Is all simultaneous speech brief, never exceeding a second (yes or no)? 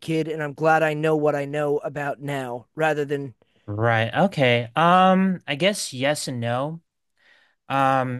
yes